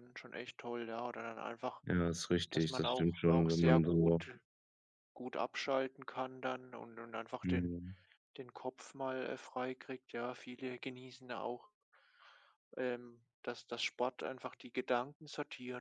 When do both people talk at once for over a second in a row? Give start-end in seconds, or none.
2.5-4.2